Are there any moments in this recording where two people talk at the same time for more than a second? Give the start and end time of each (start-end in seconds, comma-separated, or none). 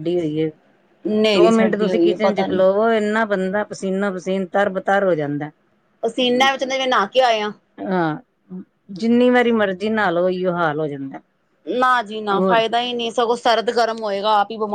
1.3-2.6